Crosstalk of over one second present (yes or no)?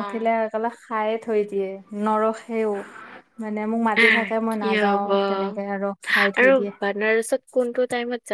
no